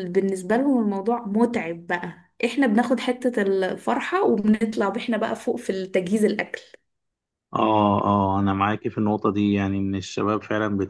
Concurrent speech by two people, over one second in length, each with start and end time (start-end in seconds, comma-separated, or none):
none